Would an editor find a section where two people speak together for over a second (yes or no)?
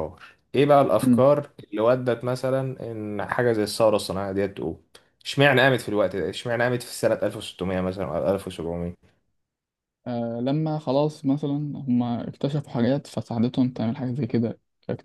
no